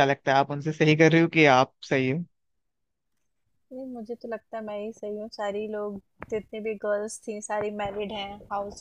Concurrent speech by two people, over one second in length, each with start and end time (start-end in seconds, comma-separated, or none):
none